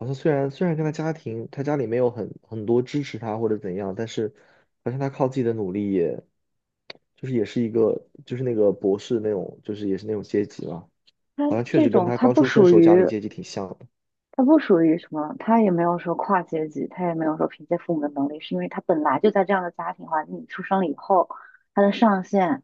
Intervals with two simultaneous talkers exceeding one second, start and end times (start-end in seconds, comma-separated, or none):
11.4-13.0